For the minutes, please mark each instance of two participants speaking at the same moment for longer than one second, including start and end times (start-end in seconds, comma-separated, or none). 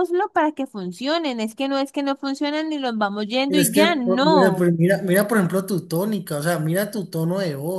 3.5-4.7